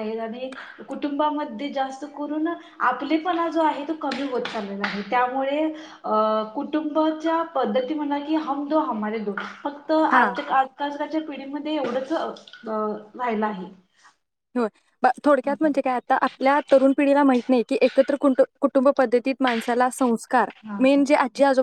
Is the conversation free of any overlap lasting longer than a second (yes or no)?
yes